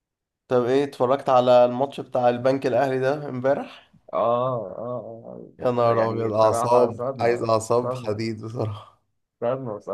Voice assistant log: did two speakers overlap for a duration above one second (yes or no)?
yes